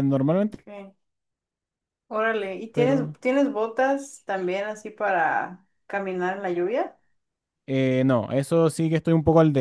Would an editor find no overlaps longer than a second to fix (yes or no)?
yes